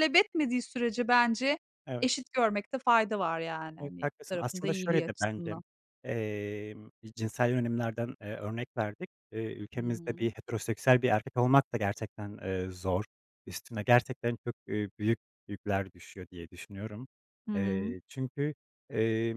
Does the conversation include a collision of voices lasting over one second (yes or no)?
yes